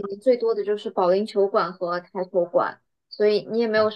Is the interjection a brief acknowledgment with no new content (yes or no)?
yes